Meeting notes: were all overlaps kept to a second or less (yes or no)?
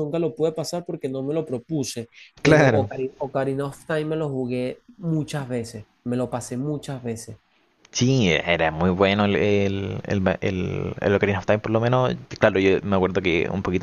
yes